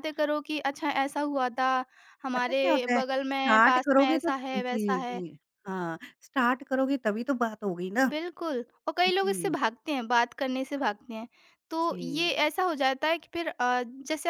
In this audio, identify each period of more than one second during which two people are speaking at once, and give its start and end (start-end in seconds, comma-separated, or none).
2.3-5.2